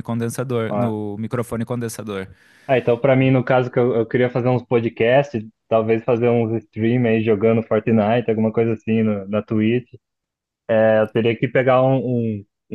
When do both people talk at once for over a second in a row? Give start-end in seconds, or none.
none